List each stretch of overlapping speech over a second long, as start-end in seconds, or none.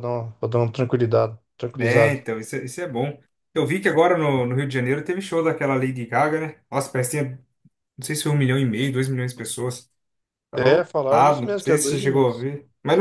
10.6-12.5